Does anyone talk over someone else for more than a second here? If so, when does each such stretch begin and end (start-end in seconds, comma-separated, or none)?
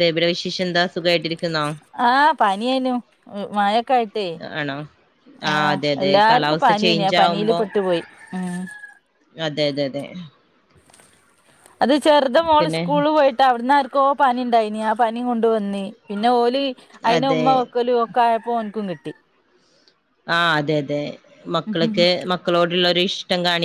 5.5-7.6